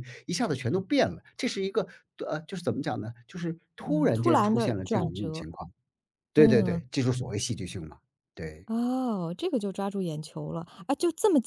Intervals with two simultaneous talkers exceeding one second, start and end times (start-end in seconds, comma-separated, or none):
3.8-5.5